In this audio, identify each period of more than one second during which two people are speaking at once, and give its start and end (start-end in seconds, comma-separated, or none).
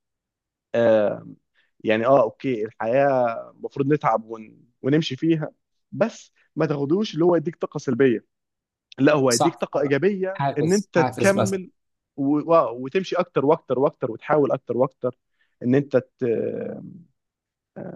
10.3-11.6